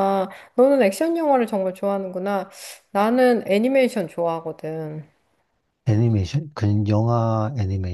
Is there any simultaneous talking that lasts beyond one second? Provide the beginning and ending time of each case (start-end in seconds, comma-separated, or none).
none